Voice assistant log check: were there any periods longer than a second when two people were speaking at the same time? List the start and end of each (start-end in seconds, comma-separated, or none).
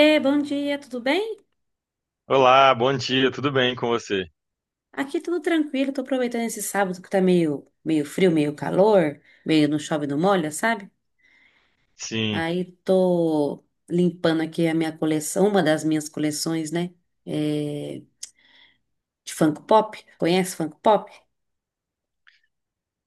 none